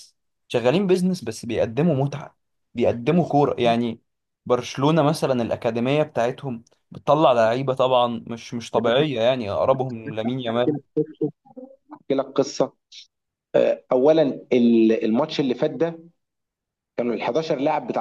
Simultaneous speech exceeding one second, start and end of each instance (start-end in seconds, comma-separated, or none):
none